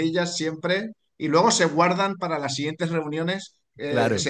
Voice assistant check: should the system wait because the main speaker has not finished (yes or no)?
yes